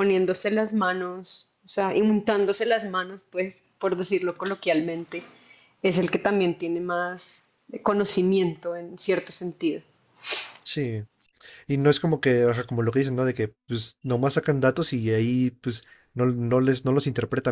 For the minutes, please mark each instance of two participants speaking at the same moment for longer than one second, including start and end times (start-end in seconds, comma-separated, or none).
none